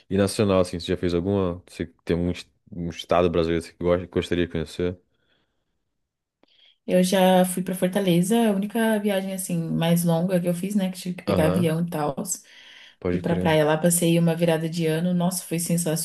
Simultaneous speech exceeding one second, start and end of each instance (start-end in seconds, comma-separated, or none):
none